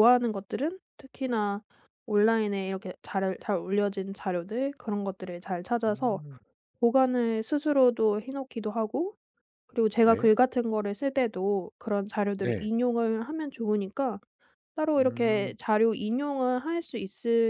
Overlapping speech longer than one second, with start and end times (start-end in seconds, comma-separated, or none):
none